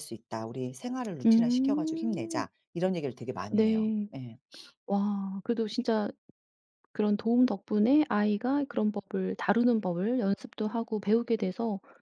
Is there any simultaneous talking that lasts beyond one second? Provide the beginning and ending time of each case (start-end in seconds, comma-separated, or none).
1.2-2.5